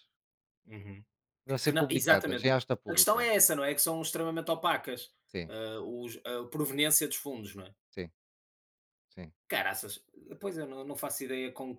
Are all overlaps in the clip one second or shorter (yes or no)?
no